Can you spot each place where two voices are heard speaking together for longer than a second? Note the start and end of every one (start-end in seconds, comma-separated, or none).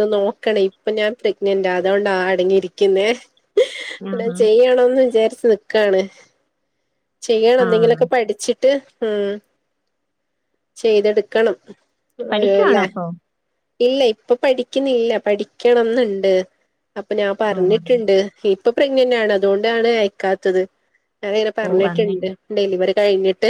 none